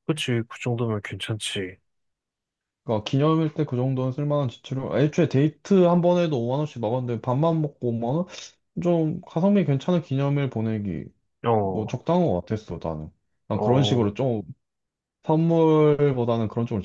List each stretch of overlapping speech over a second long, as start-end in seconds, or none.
none